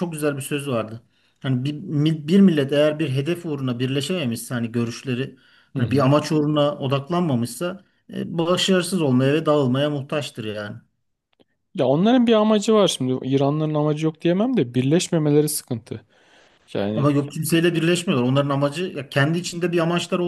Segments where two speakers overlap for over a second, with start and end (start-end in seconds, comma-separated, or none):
none